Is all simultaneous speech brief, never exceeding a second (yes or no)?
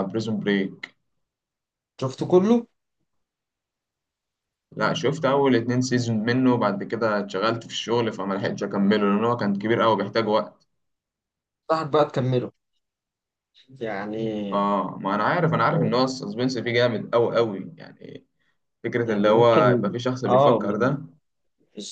no